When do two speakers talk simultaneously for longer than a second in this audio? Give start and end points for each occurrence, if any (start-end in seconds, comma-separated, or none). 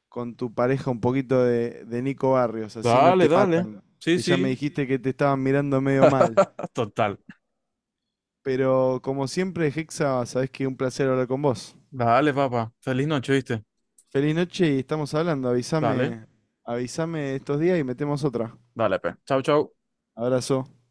2.8-4.6